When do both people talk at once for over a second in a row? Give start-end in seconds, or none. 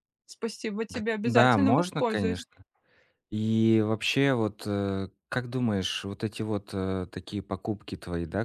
0.9-2.4